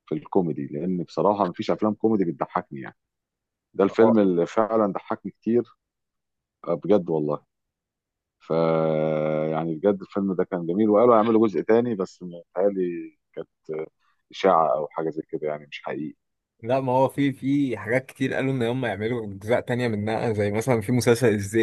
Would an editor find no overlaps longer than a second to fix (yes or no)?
yes